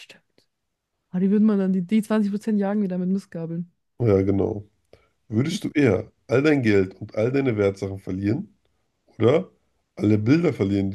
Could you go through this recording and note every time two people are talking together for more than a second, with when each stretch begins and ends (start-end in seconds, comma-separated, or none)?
none